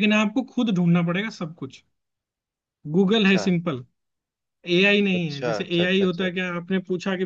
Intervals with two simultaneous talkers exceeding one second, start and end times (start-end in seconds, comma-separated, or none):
5.2-6.5